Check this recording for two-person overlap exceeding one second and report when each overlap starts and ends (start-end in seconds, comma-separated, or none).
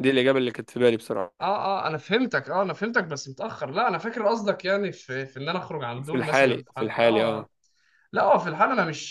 6.0-7.5